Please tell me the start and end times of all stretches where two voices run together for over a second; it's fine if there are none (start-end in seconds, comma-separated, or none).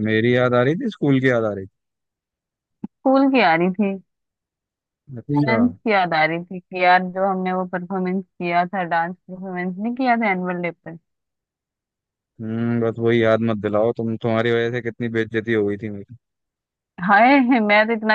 none